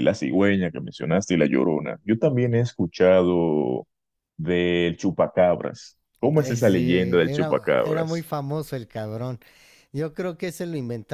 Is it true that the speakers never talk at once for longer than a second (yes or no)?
no